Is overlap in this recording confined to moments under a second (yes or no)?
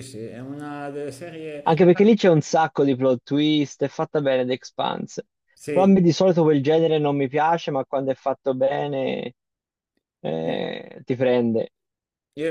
yes